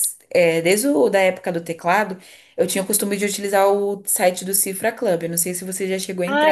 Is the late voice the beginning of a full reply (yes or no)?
yes